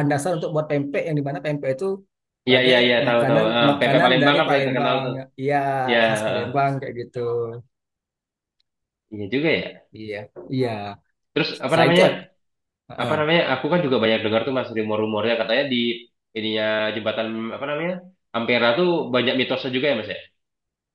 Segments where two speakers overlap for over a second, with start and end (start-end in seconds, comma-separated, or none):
2.5-5.2